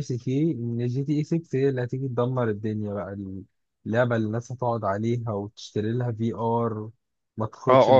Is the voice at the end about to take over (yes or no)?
yes